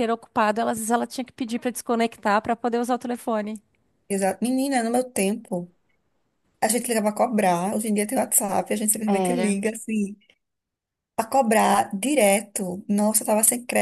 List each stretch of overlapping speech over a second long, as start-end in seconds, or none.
none